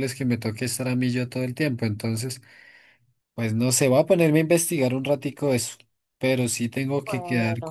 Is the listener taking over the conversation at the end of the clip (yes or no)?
no